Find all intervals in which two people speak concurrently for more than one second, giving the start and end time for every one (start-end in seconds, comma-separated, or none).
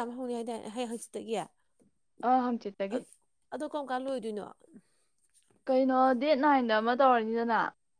none